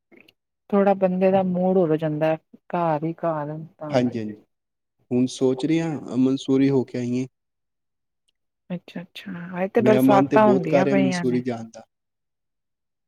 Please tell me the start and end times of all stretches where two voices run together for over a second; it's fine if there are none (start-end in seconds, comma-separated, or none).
9.8-11.4